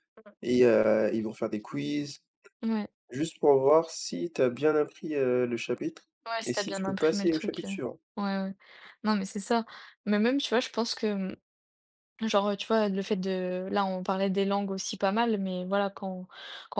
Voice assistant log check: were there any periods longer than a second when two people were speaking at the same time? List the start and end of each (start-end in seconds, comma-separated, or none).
6.5-7.7